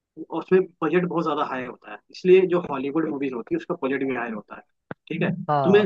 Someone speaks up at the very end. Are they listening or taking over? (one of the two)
listening